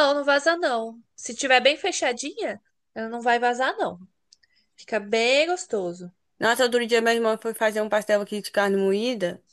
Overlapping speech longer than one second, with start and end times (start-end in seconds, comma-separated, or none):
none